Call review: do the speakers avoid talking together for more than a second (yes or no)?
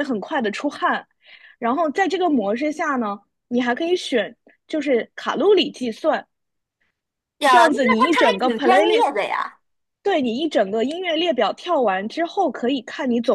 no